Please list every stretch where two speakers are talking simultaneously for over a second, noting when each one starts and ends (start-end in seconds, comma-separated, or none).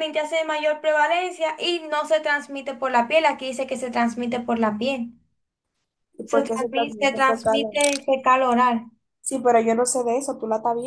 6.2-7.6